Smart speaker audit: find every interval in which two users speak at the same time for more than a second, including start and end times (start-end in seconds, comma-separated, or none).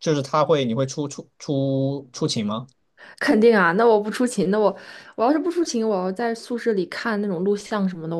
none